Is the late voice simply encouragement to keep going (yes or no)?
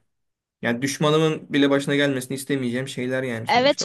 no